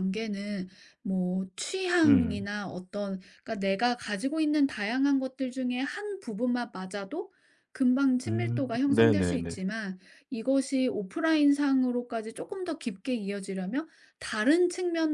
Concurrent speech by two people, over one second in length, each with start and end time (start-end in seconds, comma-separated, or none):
8.3-9.6